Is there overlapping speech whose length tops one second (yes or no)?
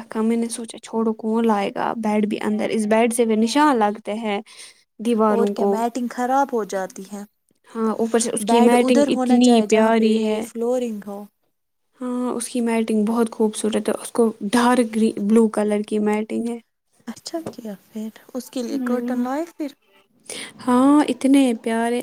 yes